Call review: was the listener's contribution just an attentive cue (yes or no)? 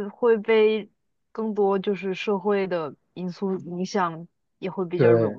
yes